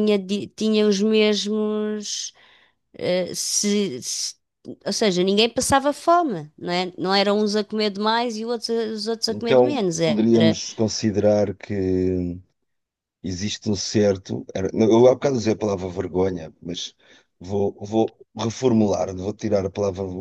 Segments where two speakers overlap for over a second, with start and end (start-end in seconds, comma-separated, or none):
9.3-10.6